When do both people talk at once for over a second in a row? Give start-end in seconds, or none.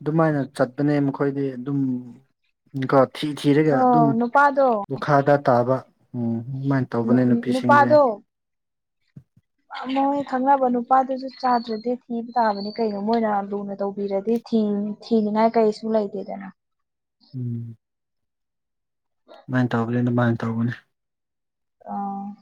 none